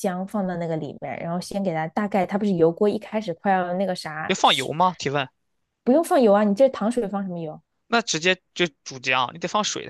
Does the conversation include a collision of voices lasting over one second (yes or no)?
no